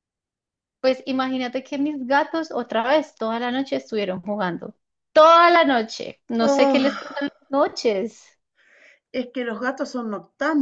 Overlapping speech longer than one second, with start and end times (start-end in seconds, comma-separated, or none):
none